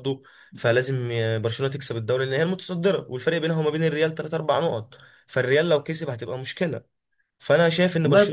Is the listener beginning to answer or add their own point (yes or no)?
no